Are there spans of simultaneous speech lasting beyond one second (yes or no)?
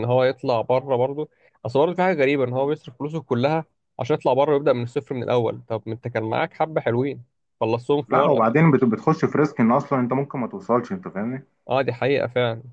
no